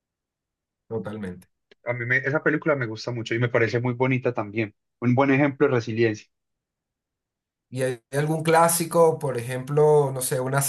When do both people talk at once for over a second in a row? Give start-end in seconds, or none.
none